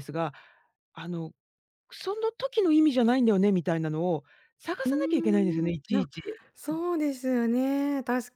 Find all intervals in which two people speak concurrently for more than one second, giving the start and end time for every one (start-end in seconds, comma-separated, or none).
4.8-6.1